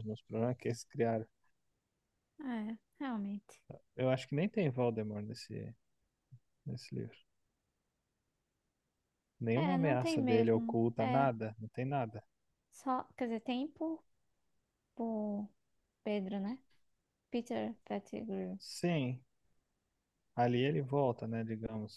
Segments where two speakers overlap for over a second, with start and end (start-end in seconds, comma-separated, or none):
9.5-11.2